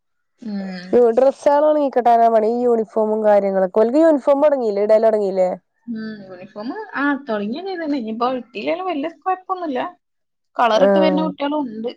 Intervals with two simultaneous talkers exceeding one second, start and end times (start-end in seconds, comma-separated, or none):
none